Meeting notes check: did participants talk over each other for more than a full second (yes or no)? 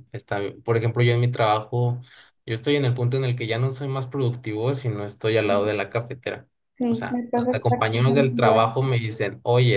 yes